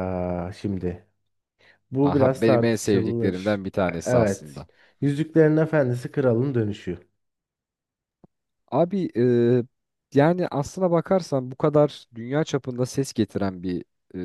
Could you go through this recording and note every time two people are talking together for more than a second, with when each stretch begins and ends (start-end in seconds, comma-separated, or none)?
2.0-4.7